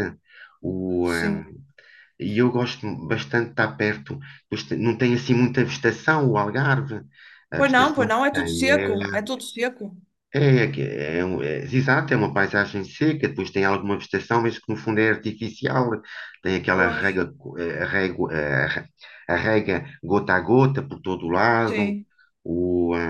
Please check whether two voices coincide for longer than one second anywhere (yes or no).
yes